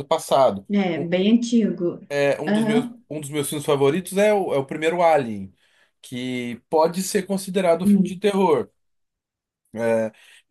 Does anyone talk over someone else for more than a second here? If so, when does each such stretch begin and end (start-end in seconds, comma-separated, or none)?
none